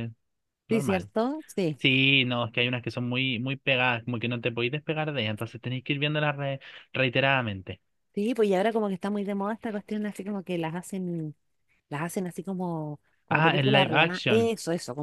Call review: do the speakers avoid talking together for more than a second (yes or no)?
no